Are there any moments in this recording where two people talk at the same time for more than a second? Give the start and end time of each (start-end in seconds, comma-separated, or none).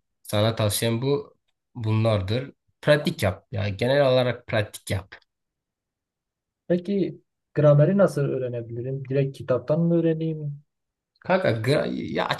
none